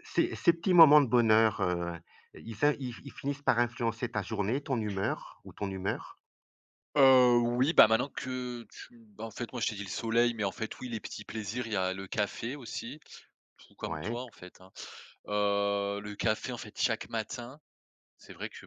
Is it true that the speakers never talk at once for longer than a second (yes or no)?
yes